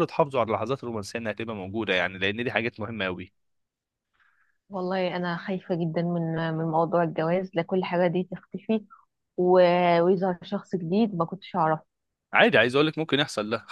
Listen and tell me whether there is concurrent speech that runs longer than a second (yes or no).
no